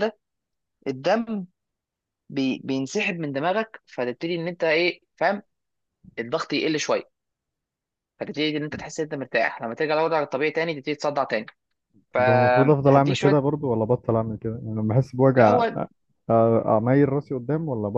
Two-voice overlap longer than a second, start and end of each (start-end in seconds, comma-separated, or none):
12.1-13.4